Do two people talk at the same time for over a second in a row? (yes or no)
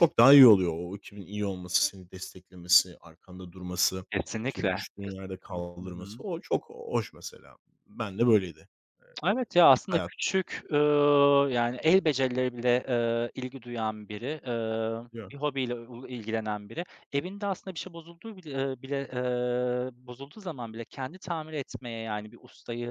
yes